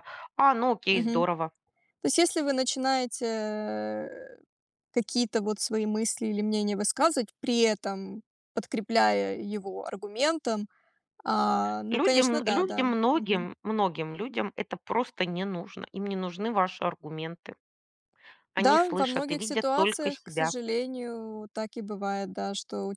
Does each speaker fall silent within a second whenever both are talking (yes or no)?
no